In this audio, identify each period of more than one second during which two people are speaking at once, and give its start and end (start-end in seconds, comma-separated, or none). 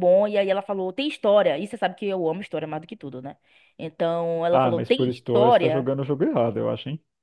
4.5-5.9